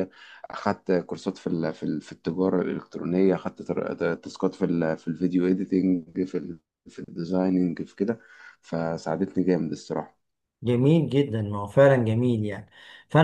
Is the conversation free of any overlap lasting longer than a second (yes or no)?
yes